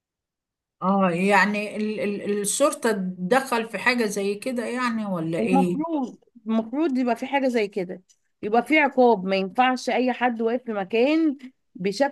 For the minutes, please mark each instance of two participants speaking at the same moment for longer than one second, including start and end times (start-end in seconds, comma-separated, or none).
none